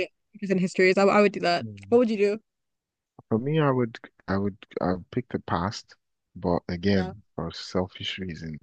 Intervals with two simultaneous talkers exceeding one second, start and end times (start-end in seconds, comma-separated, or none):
none